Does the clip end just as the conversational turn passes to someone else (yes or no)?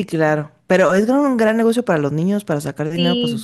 yes